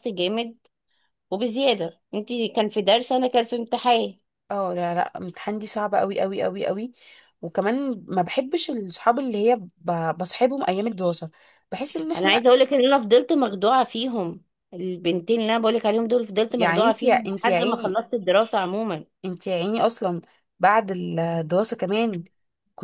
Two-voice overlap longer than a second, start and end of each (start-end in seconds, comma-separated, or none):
16.6-18.0